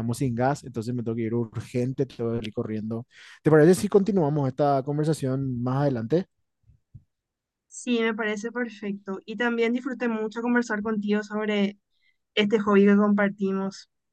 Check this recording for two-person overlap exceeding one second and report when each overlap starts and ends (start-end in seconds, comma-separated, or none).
none